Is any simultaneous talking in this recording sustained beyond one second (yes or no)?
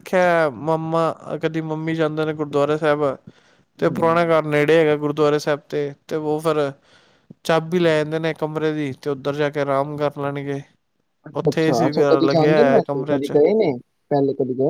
yes